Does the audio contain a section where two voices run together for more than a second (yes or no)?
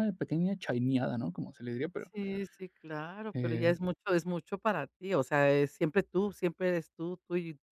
no